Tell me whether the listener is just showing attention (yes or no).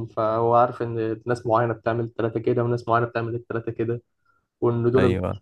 yes